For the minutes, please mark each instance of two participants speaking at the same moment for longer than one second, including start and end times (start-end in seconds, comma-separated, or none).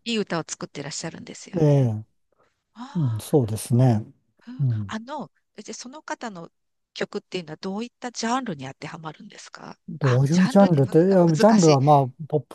9.9-11.8